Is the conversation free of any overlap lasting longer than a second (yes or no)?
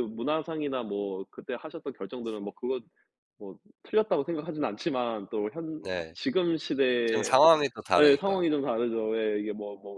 yes